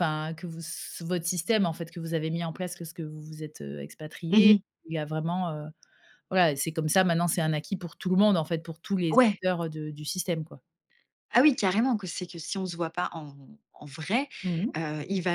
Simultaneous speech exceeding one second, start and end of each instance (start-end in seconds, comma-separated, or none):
none